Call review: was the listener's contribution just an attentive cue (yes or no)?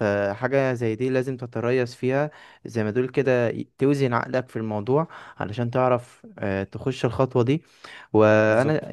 yes